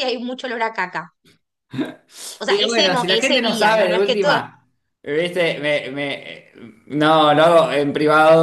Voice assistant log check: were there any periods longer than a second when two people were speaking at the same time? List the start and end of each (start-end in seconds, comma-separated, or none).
2.5-4.4